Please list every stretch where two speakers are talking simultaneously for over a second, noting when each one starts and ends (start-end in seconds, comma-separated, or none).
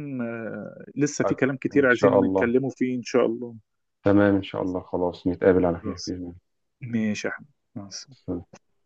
1.2-2.5